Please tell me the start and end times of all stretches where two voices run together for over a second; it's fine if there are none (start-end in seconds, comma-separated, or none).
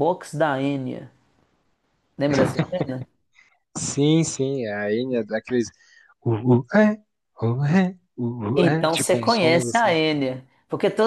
8.5-10.0